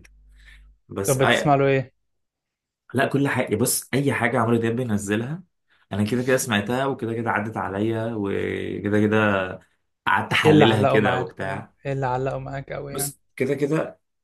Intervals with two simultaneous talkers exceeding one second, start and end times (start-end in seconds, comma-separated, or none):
10.4-11.7